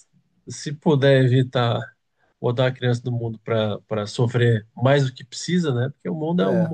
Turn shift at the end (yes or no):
no